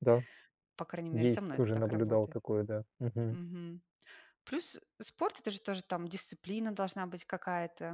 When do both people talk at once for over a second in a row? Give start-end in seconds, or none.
1.1-2.4